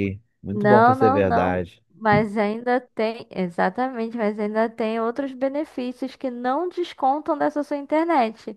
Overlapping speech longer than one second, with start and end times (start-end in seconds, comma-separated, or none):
0.5-1.8